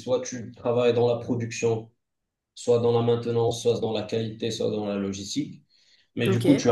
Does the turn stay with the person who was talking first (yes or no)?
yes